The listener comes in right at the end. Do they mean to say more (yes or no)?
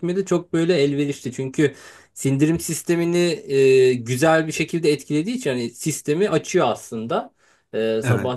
no